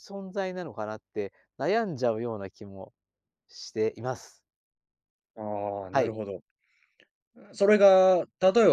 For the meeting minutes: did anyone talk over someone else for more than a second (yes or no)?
no